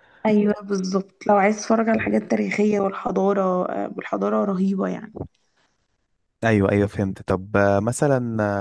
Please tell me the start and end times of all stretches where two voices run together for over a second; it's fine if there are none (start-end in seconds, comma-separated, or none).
none